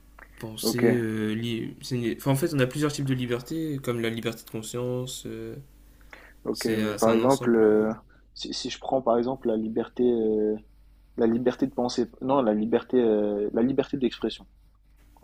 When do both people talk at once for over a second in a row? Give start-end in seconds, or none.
6.5-7.8